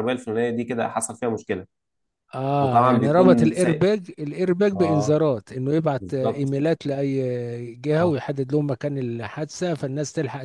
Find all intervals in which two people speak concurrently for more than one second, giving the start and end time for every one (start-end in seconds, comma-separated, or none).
2.6-3.9